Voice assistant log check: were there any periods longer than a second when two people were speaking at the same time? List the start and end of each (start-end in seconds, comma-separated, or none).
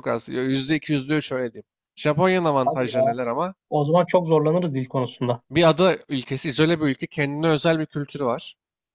none